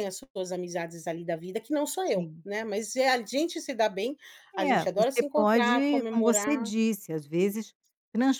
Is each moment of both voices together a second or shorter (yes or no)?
no